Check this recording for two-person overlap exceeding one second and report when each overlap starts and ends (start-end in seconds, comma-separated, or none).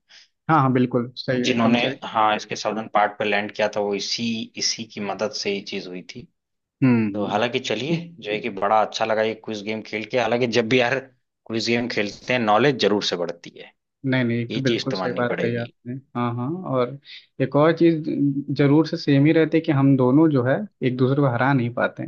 14.5-15.7